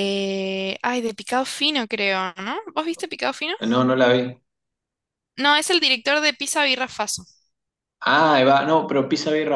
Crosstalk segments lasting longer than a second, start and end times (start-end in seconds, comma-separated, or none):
none